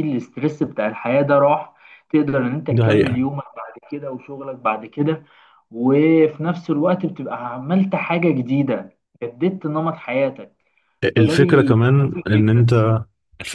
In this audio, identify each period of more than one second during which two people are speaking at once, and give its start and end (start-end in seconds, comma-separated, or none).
11.2-12.7